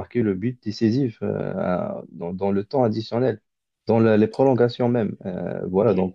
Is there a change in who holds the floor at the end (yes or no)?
no